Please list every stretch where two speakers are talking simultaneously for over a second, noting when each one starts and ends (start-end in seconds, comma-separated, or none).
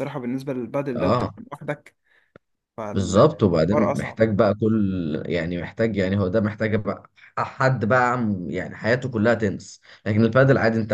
2.9-4.2